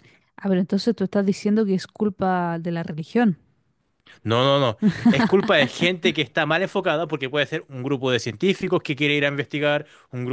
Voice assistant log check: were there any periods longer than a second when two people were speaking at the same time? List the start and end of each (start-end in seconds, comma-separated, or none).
none